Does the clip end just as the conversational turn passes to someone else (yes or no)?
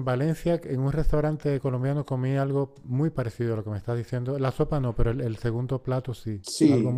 yes